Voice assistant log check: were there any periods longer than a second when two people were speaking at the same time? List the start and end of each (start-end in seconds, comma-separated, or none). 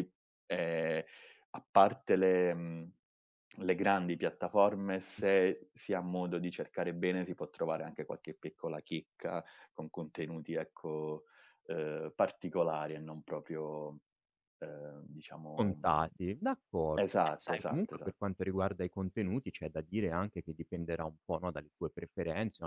16.9-18.3